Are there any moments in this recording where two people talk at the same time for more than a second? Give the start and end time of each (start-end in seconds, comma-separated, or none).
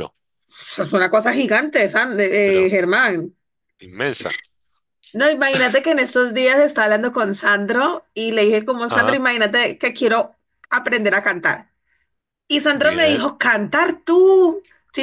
none